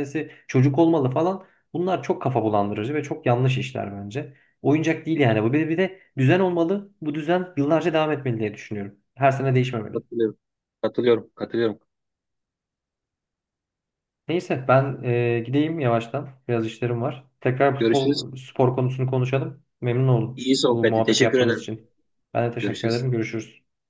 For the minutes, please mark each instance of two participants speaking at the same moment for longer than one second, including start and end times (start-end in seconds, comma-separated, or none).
20.4-21.7